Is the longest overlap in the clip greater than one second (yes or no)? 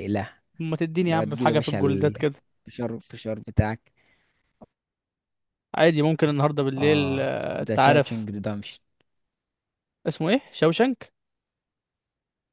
yes